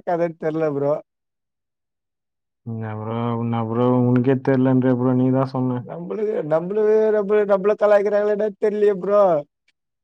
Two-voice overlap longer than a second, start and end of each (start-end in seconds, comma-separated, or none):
none